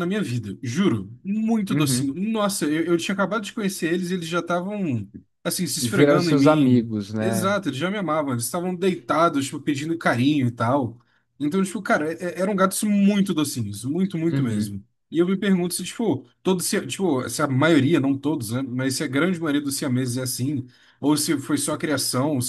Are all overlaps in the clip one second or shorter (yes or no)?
no